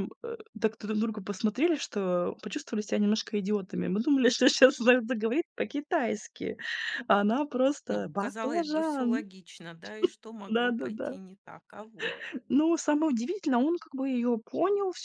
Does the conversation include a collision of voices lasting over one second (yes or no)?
yes